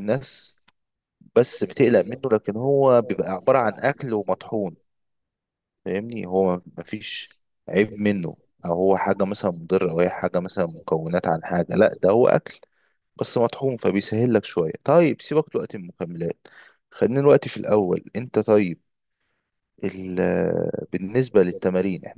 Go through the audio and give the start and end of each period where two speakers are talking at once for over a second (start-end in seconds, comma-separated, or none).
2.8-4.8